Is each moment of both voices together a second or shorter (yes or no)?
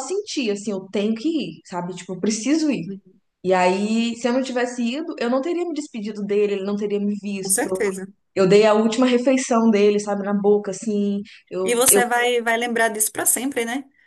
yes